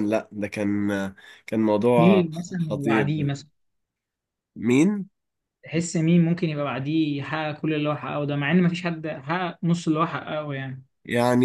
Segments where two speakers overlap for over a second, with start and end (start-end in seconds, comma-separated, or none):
2.0-3.3